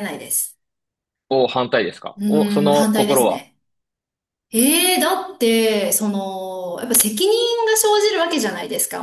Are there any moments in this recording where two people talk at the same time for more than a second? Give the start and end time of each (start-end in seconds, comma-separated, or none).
2.2-3.5